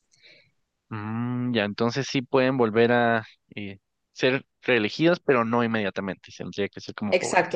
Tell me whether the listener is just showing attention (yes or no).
no